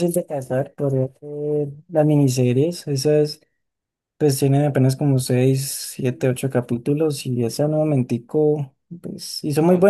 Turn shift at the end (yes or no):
no